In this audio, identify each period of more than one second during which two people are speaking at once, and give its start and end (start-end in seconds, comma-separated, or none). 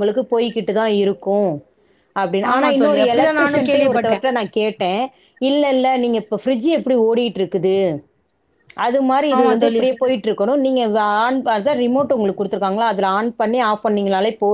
2.5-4.3